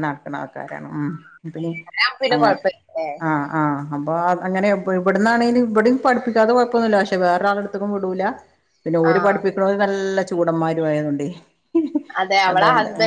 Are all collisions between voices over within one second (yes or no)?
yes